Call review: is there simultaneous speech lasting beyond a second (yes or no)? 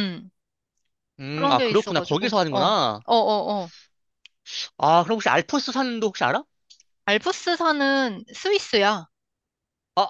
yes